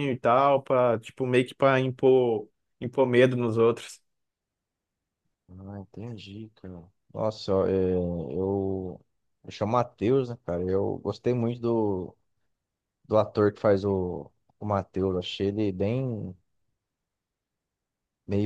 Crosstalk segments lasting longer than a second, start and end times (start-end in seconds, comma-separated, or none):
none